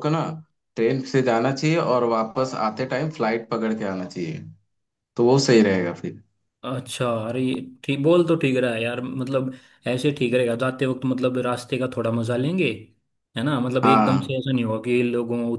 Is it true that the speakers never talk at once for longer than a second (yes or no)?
yes